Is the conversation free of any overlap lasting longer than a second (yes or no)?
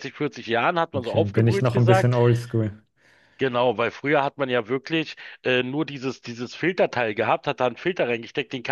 no